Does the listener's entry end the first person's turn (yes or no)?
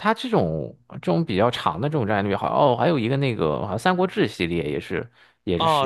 yes